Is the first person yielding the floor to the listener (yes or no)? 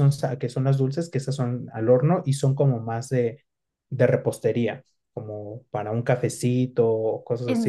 yes